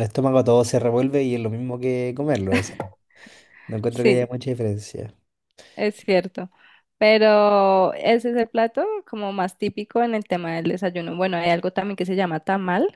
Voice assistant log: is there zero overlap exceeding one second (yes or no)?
yes